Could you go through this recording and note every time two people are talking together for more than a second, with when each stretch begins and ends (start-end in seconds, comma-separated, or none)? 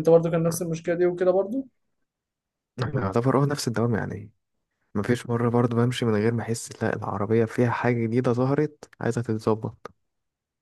none